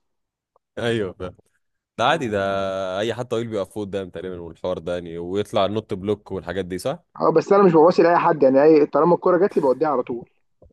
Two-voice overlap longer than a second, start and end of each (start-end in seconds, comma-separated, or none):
none